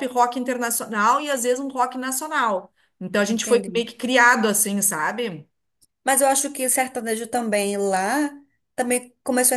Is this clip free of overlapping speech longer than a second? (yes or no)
yes